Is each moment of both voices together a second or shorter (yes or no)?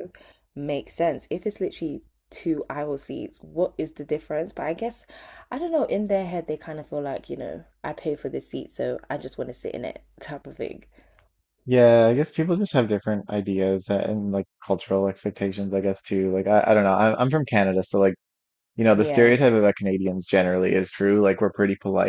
yes